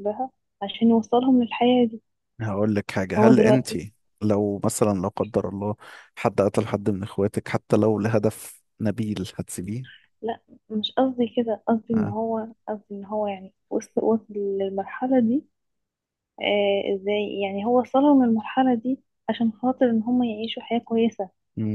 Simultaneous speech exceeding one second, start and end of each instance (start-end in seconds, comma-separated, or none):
none